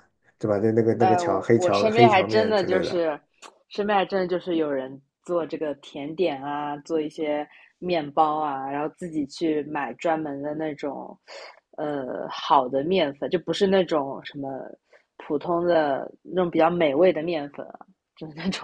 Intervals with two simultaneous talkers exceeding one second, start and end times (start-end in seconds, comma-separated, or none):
1.0-3.0